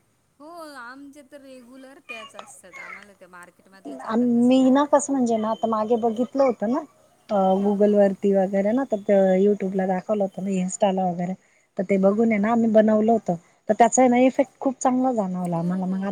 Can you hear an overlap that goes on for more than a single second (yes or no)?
no